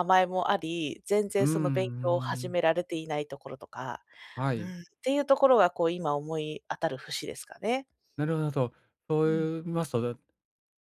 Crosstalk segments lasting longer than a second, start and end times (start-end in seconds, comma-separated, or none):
1.4-2.6